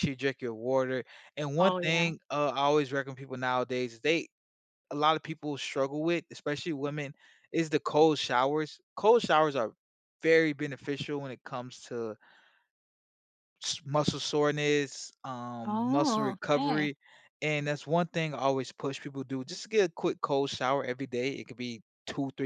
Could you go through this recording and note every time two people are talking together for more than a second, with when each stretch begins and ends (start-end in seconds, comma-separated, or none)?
15.7-16.9